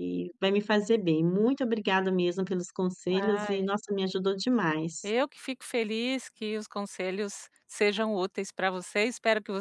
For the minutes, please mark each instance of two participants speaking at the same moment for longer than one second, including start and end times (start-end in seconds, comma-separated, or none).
none